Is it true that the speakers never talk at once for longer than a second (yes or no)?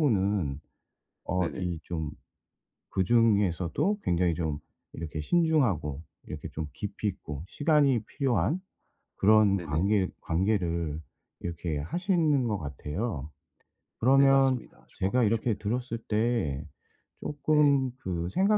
no